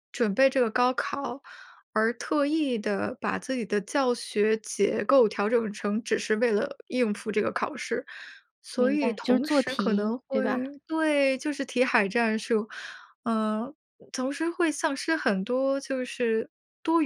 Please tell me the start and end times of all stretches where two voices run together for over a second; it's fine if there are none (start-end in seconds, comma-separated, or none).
8.8-10.6